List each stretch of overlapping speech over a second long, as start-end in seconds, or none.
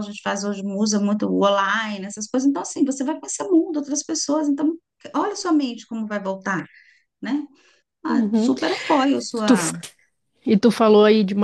none